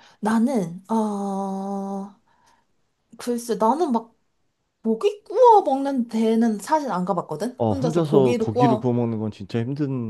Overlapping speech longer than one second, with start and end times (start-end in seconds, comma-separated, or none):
7.6-8.9